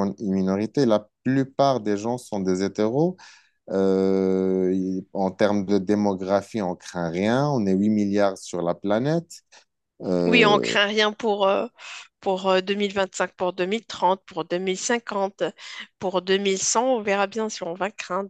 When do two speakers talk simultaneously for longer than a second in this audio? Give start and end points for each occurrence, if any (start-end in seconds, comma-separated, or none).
none